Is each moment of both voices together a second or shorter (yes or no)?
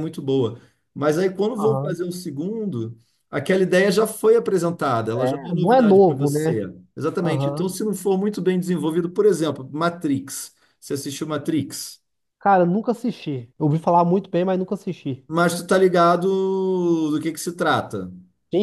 no